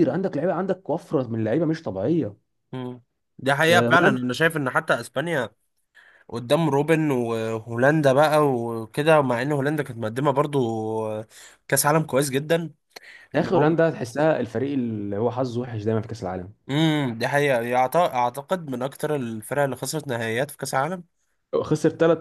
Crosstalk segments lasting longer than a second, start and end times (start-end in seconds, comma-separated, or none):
none